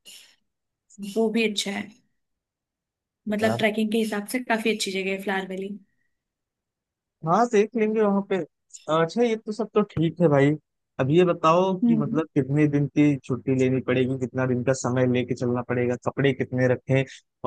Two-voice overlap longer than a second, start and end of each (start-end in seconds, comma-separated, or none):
none